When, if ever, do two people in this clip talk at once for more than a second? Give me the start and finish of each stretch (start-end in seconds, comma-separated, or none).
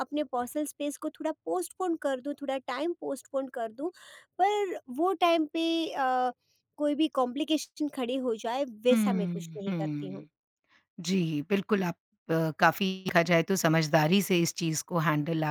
8.9-10.2